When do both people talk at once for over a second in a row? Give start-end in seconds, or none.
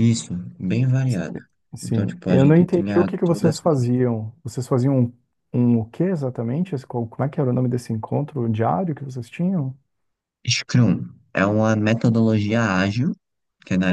1.8-4.0